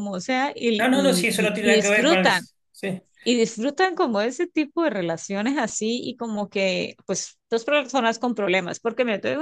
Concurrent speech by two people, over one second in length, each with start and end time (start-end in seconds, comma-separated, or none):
0.8-2.3